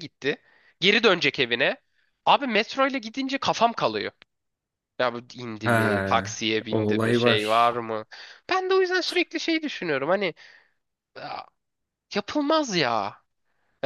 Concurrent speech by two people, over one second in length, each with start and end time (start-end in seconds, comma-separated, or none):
5.6-7.7